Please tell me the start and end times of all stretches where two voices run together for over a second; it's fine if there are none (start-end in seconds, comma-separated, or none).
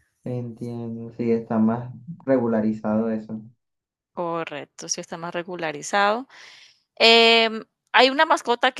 none